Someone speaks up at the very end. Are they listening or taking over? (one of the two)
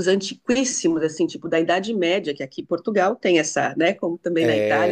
taking over